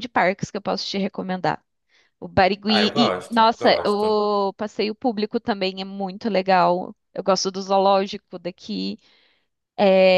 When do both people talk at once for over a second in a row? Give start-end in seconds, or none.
2.7-4.2